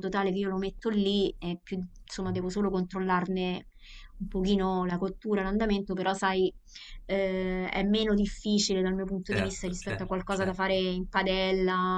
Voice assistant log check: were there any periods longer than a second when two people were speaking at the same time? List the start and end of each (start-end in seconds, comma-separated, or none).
9.3-10.8